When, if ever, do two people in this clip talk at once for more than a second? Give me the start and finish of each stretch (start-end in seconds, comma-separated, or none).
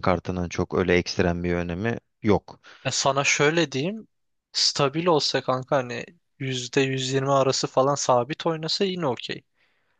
none